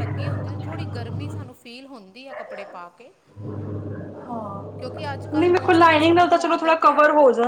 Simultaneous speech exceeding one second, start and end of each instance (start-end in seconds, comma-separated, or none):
5.4-7.0